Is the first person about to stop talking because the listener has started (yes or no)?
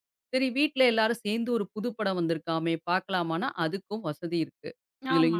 no